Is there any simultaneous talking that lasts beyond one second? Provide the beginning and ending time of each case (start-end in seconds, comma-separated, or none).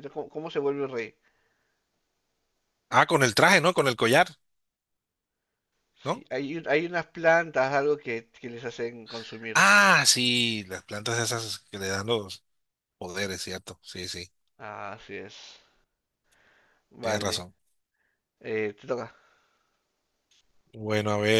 none